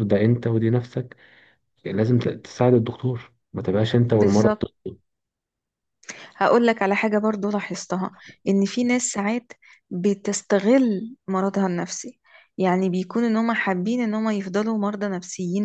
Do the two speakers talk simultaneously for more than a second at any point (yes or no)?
no